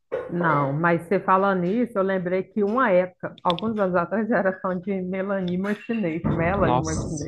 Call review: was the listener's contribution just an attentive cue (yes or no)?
no